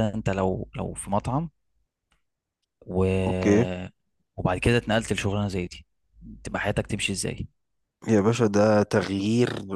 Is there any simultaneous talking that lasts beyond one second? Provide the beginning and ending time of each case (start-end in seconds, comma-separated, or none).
none